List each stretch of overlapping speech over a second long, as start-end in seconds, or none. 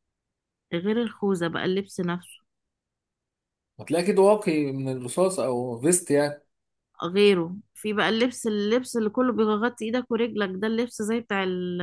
none